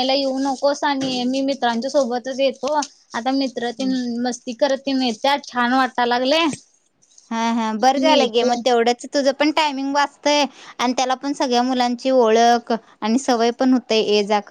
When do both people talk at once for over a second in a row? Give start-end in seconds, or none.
none